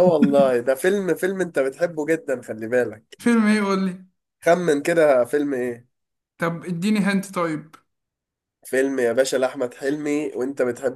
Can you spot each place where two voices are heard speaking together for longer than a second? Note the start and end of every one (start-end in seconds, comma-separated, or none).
none